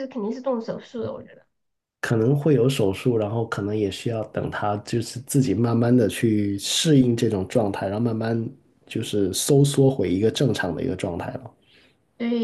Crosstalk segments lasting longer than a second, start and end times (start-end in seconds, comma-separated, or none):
none